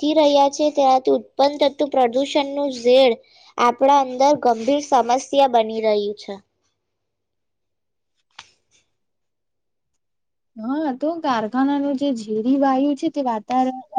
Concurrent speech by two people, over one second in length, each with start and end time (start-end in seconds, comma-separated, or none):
none